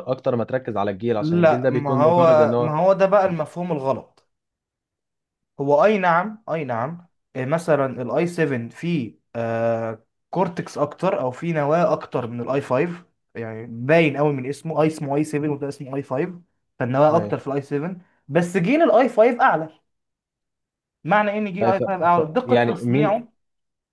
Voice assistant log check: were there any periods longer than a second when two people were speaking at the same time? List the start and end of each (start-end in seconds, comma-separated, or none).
1.2-2.8, 21.6-23.2